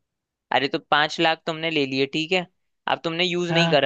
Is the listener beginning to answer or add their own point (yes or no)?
no